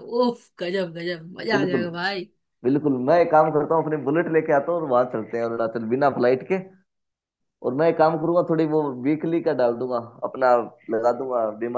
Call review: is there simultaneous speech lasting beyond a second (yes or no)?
no